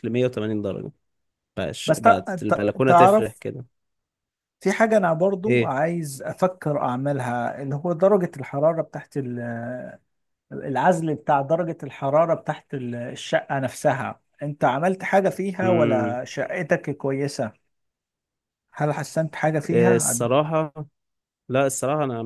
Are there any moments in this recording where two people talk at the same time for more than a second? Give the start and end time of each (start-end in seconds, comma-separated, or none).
1.9-3.4